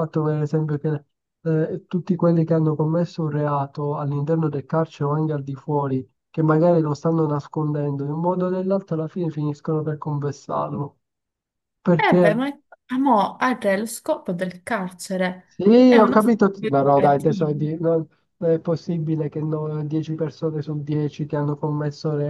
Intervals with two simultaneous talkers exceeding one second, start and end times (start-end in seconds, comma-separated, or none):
15.8-17.5